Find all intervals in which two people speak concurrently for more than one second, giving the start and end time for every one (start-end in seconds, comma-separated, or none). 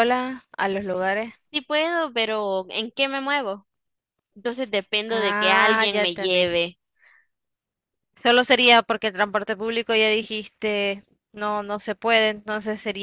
5.1-6.5